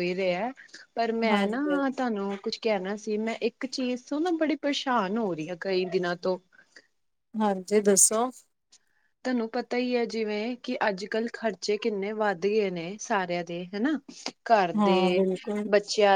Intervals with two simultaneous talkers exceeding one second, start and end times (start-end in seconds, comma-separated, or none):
none